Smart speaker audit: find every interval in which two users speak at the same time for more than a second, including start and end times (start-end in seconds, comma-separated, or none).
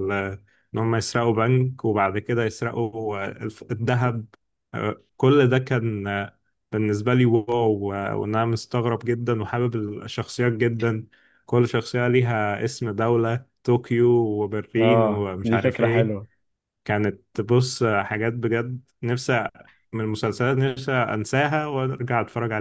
14.8-16.2